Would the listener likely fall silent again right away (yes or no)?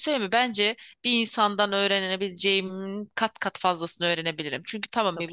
yes